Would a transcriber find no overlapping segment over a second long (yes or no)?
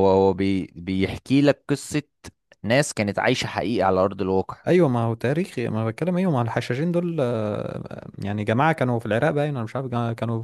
yes